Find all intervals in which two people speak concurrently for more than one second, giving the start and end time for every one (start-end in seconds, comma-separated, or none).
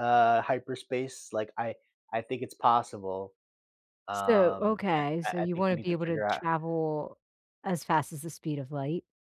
4.1-6.4